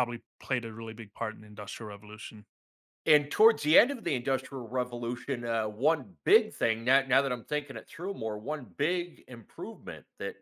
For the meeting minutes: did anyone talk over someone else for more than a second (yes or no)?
no